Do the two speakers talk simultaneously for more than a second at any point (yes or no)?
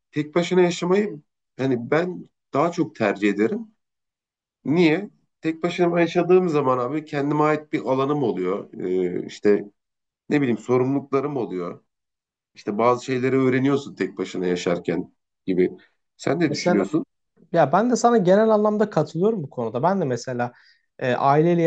no